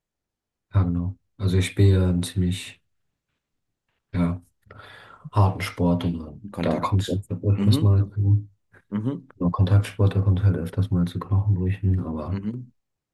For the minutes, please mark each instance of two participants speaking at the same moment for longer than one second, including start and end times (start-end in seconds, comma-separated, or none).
6.5-8.0